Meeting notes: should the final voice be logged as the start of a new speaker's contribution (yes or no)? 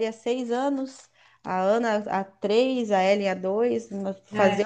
no